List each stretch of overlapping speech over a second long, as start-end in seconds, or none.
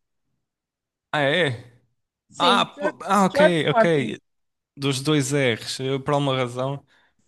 2.4-4.2